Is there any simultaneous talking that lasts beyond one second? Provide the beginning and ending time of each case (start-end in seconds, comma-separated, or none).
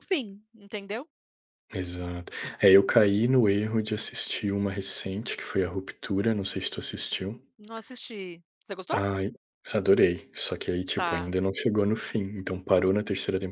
none